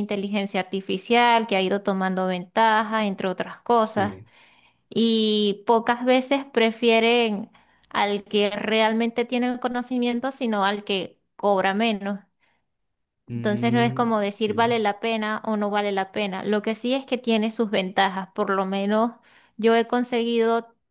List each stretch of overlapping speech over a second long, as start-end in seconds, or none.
13.3-14.8